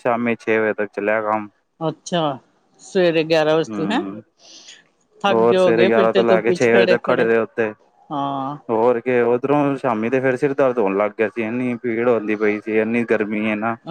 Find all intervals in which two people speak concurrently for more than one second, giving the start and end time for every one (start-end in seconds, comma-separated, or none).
5.3-7.3